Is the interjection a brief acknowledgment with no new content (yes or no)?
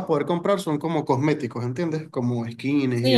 no